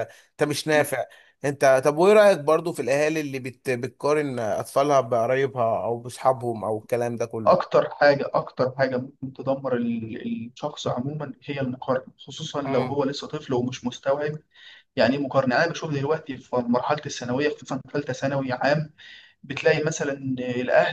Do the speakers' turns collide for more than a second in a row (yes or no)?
no